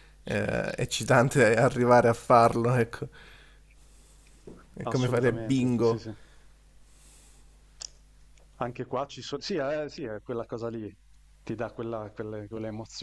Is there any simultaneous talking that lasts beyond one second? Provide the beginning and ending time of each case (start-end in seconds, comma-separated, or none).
4.8-6.0